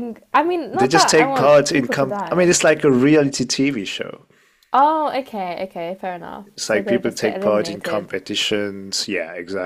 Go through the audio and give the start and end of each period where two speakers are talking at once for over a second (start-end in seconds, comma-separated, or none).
0.7-2.5, 6.4-8.1